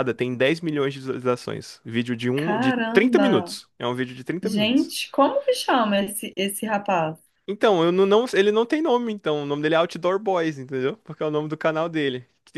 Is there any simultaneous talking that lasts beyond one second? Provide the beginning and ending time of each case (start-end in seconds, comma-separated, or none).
2.4-3.6